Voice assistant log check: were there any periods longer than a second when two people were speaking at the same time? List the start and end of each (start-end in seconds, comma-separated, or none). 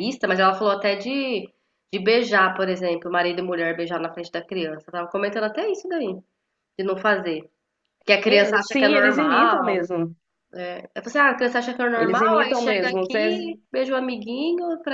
8.2-9.8, 11.9-13.5